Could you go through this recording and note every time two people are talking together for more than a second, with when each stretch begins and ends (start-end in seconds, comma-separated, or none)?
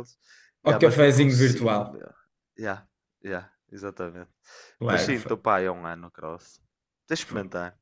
0.7-2.0